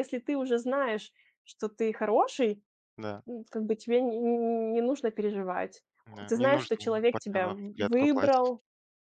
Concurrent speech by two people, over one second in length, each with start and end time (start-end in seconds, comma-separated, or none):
6.3-8.5